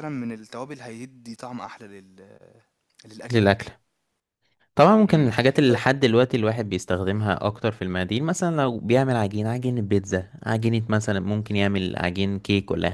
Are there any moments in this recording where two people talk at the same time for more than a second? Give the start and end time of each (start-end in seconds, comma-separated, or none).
none